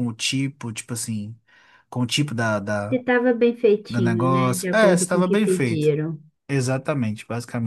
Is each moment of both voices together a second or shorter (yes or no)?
no